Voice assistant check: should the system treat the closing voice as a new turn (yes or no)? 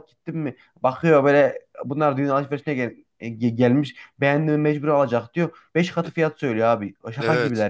yes